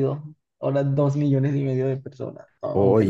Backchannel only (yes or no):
no